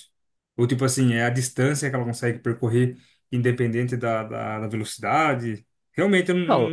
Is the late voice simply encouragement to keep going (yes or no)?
no